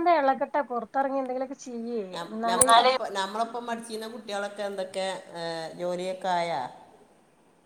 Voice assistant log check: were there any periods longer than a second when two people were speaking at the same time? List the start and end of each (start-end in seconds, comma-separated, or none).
none